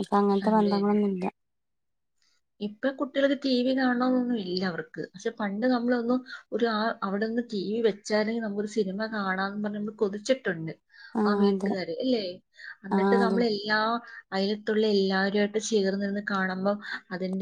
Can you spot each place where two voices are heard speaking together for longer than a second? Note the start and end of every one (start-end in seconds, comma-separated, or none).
none